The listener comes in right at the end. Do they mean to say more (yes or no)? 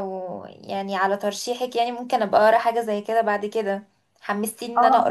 yes